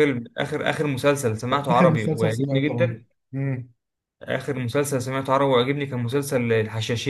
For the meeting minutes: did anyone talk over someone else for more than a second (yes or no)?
yes